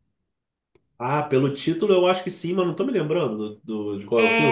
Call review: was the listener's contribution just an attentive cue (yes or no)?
no